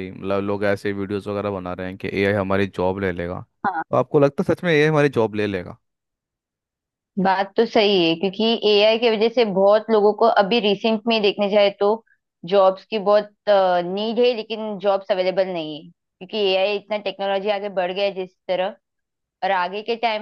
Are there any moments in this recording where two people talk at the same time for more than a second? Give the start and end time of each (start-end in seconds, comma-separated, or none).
none